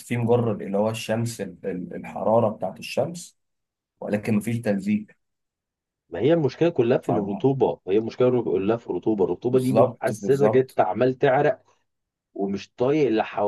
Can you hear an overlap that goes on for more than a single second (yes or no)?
yes